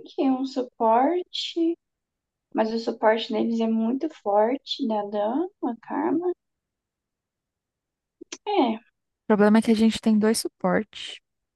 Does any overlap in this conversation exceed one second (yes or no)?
no